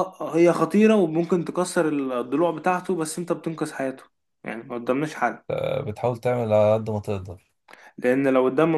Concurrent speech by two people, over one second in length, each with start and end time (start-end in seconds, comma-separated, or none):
none